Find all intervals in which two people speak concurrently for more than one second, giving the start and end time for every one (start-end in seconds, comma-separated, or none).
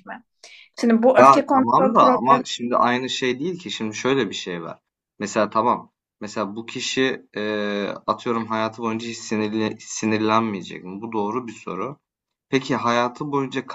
1.2-2.4